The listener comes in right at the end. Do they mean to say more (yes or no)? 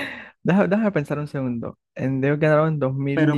yes